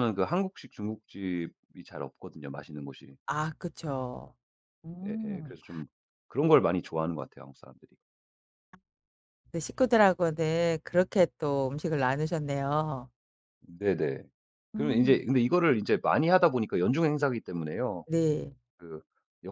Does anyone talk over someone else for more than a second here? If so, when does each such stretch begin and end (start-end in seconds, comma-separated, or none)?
none